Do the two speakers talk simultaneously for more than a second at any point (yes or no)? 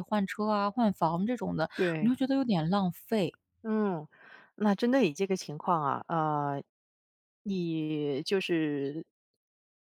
no